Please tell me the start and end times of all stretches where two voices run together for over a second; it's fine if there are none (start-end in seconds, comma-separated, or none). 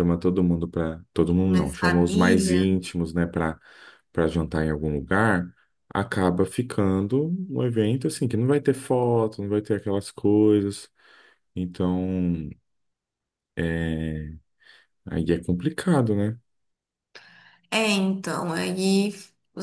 1.5-2.7